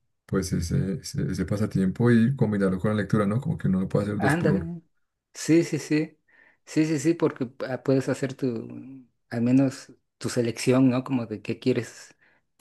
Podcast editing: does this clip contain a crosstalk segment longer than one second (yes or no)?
no